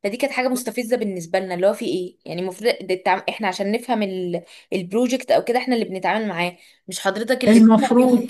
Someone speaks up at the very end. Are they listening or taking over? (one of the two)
listening